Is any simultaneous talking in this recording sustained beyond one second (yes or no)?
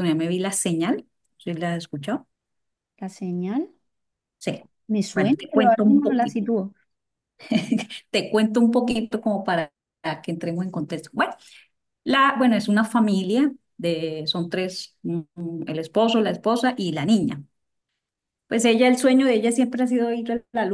yes